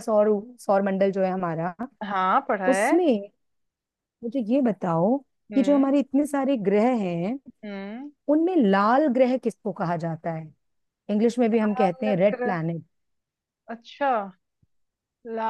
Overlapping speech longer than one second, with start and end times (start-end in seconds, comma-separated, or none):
none